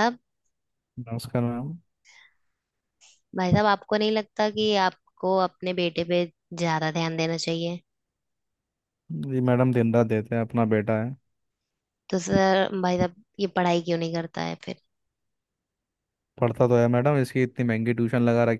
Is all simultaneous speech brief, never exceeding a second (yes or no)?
yes